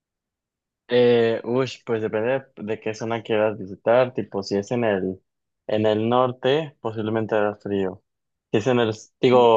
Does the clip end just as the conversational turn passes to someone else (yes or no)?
no